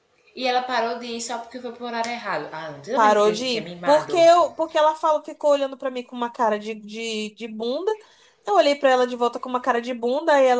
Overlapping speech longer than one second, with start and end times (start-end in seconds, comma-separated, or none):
2.9-4.2